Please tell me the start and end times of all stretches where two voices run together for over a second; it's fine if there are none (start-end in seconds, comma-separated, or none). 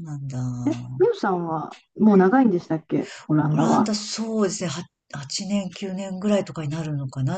none